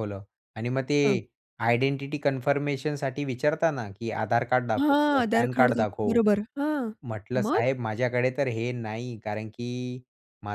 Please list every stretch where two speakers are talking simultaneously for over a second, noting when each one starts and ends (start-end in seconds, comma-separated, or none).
4.8-6.2